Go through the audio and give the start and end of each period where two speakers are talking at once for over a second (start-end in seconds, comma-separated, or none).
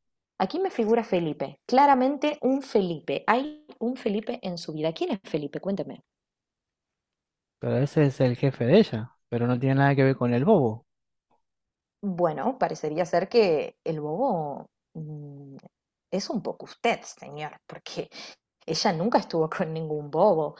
none